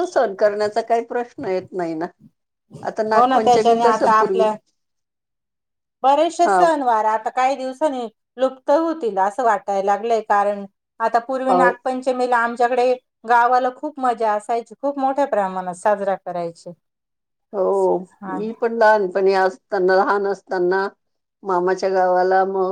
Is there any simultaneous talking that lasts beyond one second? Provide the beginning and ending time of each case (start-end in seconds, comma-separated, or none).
3.1-4.5